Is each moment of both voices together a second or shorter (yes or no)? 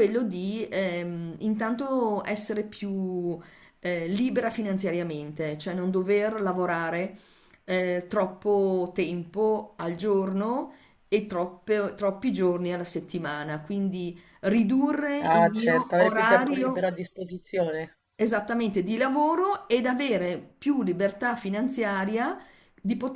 no